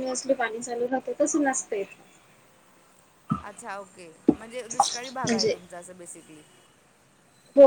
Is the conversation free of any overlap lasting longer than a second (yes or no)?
yes